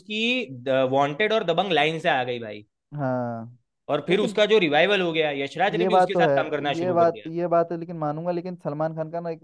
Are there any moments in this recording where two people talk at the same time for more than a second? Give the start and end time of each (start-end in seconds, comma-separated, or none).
5.8-7.3